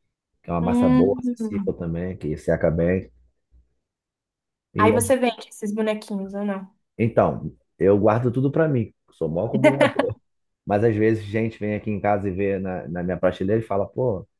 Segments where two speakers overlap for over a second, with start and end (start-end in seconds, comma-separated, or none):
0.6-1.8